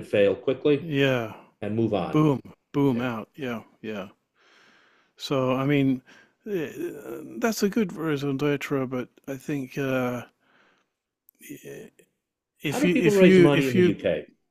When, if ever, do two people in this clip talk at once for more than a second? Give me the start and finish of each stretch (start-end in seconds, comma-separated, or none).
12.7-13.9